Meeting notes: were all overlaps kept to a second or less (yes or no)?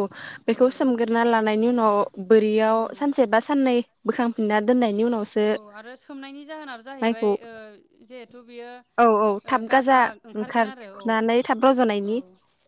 yes